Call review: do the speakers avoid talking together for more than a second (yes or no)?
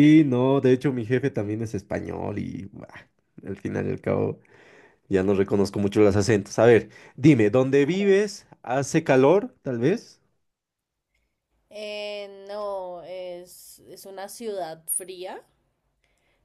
yes